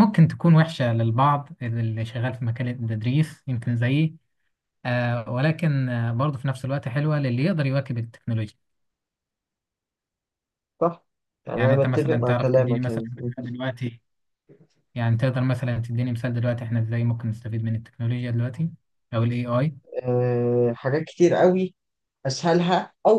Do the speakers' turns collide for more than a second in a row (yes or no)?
yes